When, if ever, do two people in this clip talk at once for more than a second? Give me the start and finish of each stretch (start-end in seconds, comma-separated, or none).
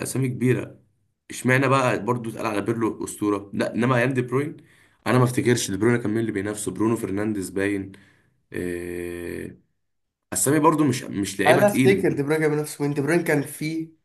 none